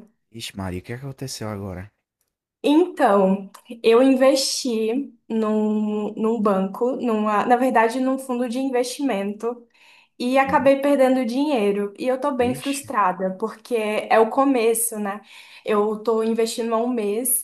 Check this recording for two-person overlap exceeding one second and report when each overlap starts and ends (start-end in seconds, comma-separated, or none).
none